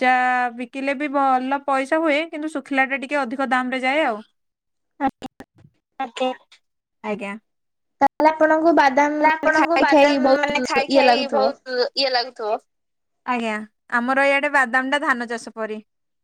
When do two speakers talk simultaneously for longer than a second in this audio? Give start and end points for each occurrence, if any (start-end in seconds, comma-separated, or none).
9.2-11.4